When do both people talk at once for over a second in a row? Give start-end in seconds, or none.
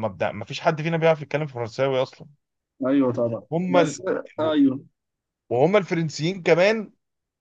none